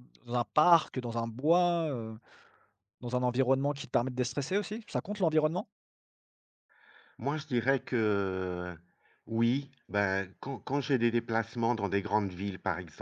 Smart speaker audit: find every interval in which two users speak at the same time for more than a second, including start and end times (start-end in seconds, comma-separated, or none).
none